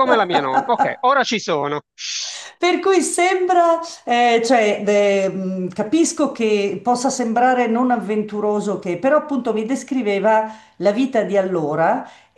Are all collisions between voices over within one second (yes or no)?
yes